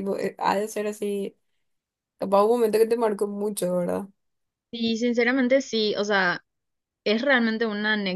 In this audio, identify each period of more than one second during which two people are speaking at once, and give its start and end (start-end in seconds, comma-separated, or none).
none